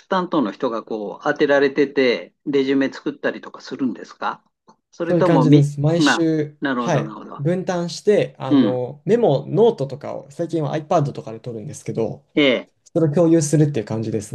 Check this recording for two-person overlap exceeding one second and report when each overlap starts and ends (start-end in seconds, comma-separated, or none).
5.0-7.5